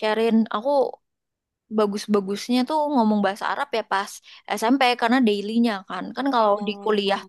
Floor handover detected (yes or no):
no